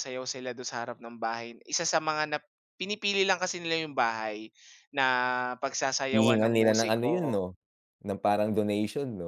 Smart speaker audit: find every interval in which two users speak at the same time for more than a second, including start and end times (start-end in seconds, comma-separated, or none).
6.1-7.4